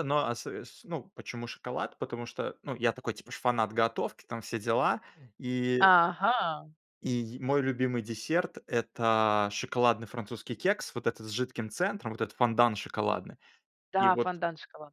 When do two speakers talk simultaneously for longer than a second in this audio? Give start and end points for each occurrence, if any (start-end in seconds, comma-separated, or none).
none